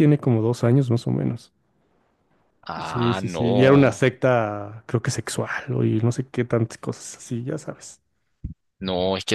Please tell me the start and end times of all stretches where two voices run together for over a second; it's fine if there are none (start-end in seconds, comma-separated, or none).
2.8-4.0